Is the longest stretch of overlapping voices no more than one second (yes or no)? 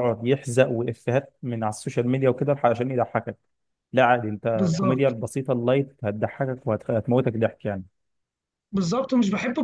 yes